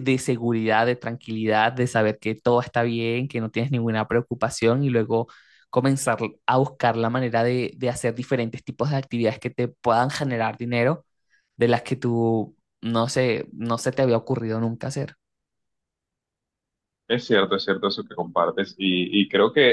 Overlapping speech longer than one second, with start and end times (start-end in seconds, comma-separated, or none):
none